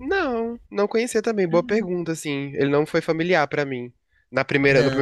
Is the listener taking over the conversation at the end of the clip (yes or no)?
no